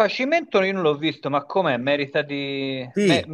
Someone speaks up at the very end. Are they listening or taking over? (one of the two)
taking over